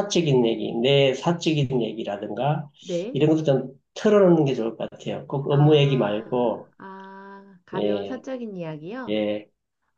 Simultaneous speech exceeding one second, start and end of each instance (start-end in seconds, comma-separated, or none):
5.5-6.7